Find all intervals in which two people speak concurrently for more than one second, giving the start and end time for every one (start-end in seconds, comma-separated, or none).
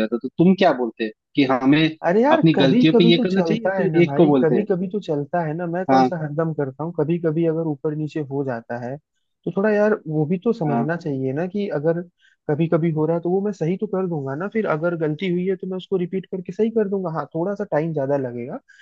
2.3-4.7